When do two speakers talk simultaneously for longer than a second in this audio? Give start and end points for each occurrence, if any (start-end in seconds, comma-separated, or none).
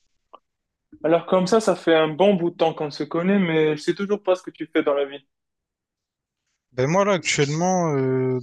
none